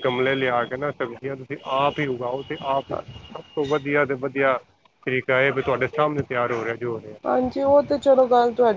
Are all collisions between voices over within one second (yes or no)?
yes